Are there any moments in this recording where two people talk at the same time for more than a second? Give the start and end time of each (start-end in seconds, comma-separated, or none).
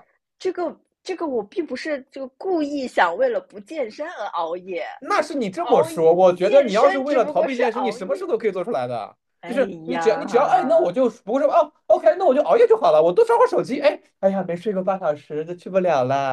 5.5-8.2, 9.4-11.0